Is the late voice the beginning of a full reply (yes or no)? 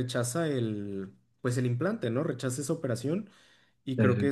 no